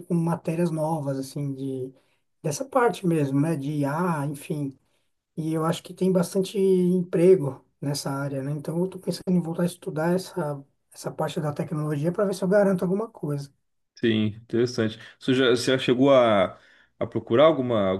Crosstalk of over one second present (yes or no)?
no